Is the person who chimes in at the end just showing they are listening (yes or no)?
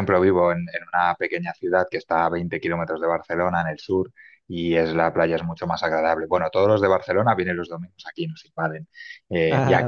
yes